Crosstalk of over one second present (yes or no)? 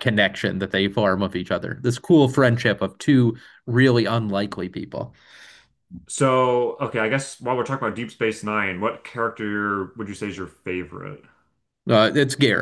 no